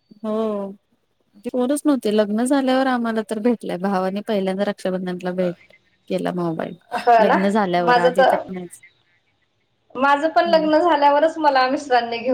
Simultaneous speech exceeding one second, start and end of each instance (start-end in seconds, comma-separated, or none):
none